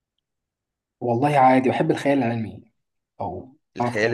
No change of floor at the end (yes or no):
no